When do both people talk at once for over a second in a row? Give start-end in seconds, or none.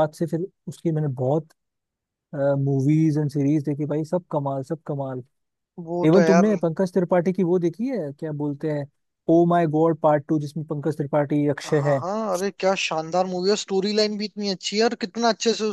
none